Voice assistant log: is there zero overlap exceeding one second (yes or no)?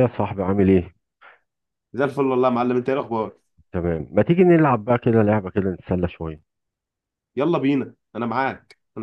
yes